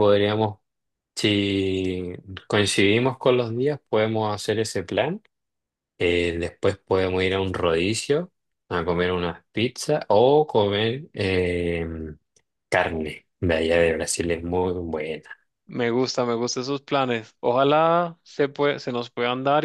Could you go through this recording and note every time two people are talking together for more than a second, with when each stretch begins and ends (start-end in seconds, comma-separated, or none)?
none